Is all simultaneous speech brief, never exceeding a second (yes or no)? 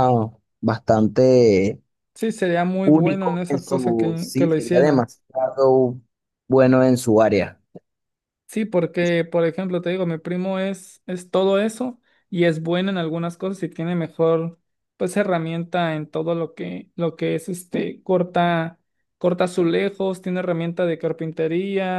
no